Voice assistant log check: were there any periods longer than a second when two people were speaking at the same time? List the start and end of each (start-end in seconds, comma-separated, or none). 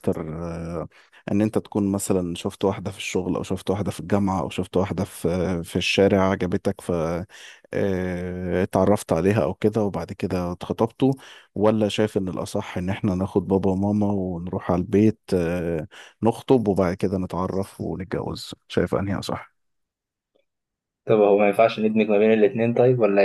none